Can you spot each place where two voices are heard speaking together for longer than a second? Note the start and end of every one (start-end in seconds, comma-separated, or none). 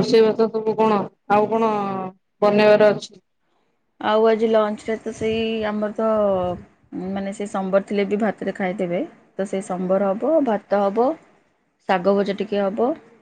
none